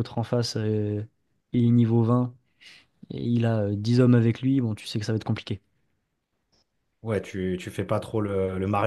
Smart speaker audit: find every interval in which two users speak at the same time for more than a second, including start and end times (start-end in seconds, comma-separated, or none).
none